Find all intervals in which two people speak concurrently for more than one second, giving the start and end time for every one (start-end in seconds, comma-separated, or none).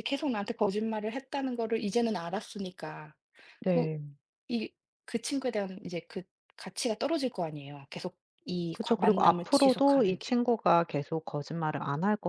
8.7-10.4